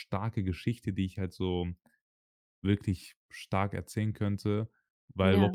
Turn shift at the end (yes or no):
no